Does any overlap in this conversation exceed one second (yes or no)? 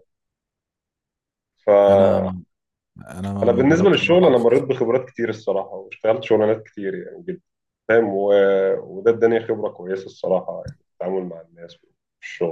yes